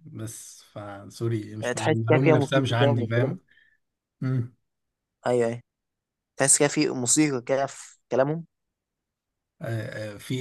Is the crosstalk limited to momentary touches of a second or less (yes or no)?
no